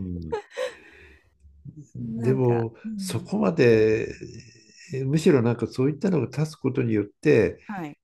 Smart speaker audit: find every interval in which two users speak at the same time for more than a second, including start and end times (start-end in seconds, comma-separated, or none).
2.0-3.3